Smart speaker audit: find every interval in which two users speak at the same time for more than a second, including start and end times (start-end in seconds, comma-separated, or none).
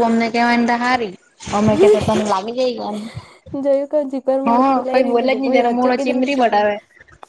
4.5-6.8